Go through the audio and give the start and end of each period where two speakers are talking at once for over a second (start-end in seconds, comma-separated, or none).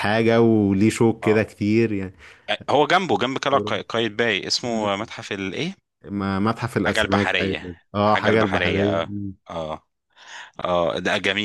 6.9-9.1